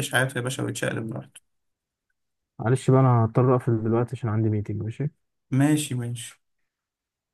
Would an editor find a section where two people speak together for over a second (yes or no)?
no